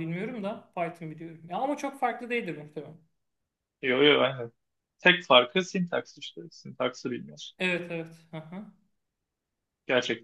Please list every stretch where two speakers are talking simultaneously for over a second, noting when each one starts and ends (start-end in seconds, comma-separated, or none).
none